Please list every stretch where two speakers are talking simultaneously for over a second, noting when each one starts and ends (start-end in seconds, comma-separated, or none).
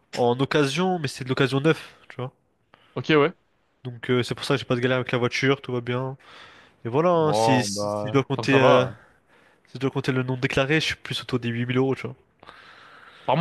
7.2-8.8